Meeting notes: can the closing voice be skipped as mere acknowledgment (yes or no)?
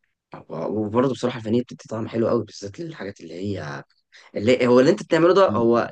yes